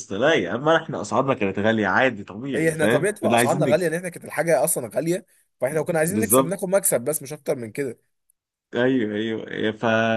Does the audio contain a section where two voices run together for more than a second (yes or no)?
yes